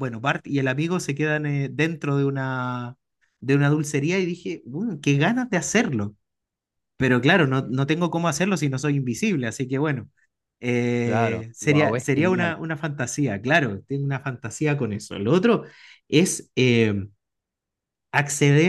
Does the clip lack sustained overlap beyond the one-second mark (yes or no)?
no